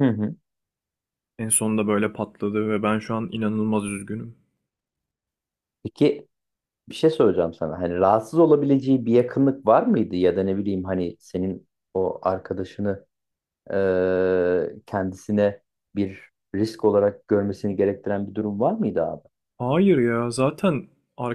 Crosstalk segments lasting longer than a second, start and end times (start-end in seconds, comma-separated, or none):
none